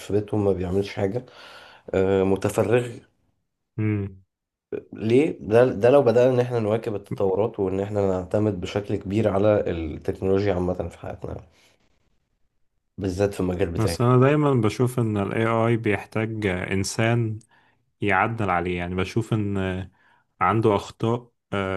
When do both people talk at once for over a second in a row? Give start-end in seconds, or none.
none